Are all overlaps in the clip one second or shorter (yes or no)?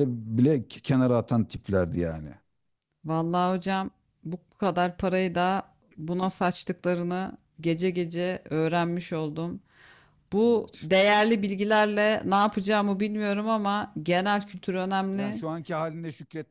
yes